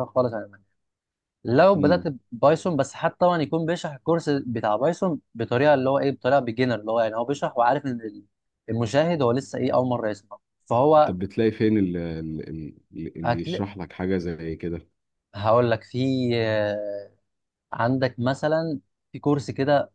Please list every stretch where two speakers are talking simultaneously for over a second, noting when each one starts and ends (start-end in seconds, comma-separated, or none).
none